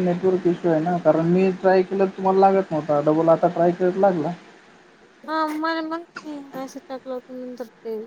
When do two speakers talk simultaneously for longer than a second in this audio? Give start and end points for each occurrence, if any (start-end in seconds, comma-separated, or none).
none